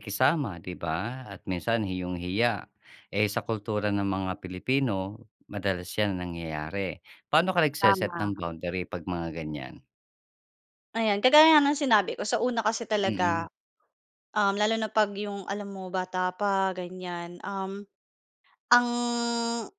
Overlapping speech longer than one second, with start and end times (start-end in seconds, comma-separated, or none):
none